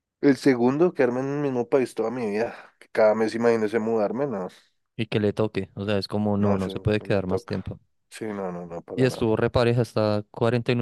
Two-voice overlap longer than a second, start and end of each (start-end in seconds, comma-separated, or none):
6.3-7.6